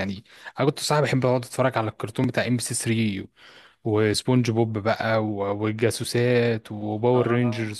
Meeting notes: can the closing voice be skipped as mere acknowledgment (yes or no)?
yes